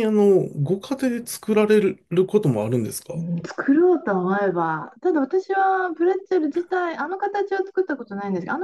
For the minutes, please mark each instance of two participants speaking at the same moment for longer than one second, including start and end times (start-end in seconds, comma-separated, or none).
none